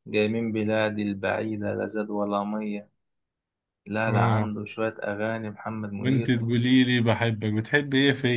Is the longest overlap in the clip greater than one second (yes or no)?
no